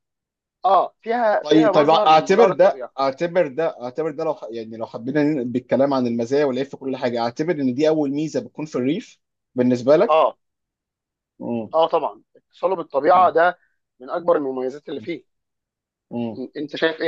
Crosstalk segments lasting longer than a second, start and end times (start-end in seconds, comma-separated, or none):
1.4-2.9